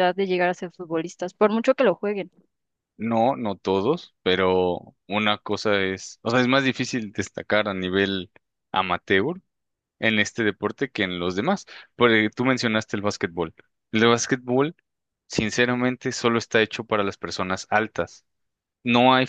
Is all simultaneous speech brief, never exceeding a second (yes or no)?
yes